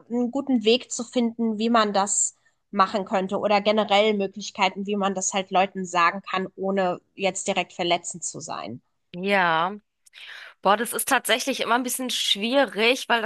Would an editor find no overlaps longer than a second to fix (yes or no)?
yes